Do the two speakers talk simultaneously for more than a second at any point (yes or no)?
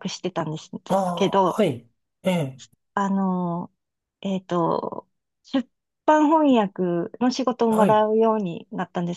no